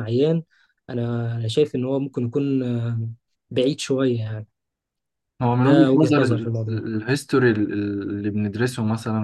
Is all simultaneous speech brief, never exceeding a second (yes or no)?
no